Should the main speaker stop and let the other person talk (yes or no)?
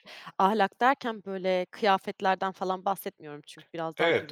yes